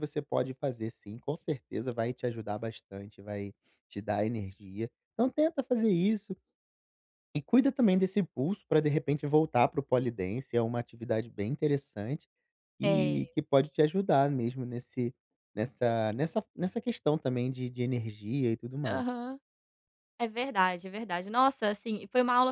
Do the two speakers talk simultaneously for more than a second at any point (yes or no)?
no